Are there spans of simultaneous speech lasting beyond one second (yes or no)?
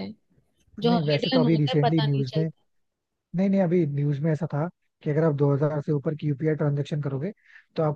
yes